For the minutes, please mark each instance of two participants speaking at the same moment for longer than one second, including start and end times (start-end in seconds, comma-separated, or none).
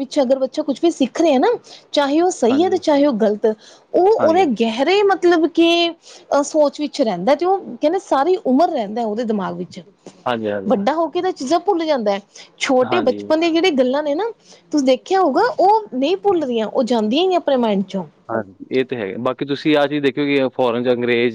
none